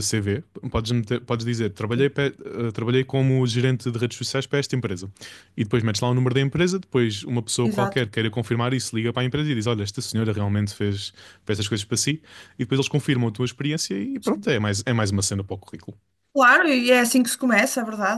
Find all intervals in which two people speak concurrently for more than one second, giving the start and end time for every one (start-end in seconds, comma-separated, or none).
none